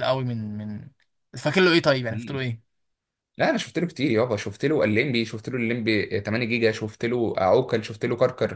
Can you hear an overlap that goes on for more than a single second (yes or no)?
no